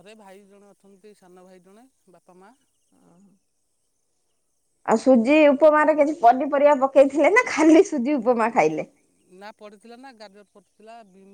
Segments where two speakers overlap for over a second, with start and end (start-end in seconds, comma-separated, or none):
none